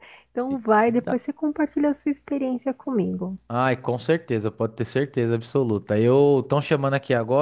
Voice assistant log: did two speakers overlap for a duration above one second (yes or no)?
no